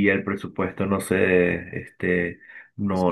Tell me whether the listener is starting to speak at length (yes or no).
no